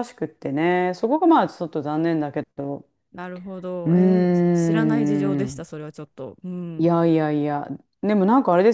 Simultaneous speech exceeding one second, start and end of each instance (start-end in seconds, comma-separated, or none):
3.9-5.6